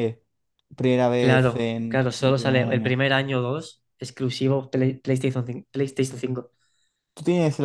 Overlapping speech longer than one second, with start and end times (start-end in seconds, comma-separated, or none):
1.2-3.0